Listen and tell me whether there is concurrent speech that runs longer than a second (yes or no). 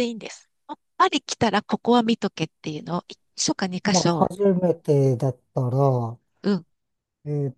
no